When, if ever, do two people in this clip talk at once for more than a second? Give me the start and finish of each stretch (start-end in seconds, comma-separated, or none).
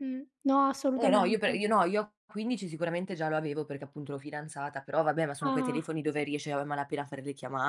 none